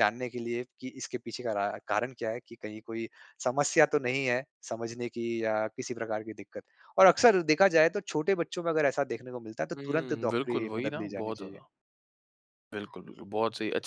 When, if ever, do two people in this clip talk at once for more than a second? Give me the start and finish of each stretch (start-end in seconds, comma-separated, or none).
9.7-11.6